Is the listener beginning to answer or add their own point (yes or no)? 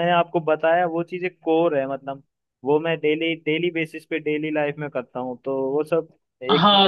yes